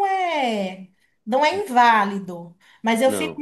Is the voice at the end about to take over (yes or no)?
no